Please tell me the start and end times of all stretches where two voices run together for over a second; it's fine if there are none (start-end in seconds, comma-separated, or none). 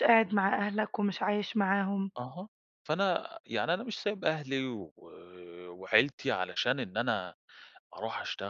none